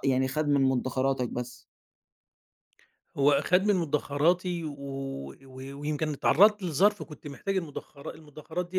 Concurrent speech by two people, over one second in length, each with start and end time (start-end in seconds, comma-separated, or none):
none